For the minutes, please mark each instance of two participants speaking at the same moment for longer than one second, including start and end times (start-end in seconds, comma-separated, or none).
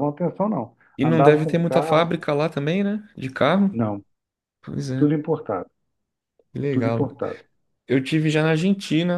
1.0-2.2